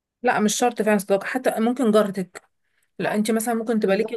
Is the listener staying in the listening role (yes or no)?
yes